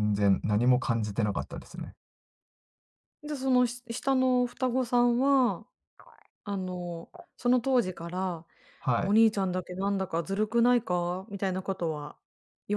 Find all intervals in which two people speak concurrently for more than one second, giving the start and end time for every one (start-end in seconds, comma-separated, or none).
none